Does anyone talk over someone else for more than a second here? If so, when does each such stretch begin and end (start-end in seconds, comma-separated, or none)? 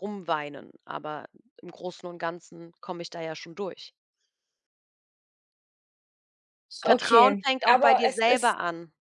6.8-8.6